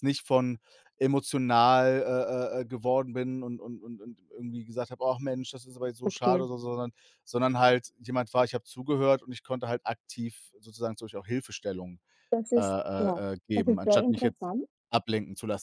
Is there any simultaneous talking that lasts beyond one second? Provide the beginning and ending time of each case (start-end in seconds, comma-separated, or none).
12.6-14.5